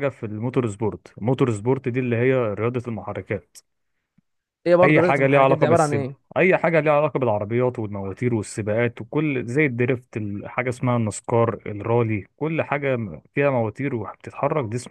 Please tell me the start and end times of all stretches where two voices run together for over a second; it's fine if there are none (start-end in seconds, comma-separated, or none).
4.8-6.2